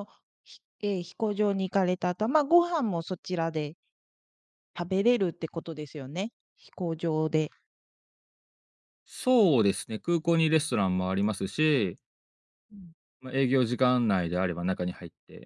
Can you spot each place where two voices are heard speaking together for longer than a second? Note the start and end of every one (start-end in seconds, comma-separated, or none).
none